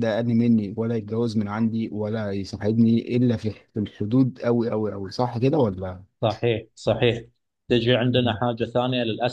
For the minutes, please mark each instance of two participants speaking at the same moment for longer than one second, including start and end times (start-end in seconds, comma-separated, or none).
none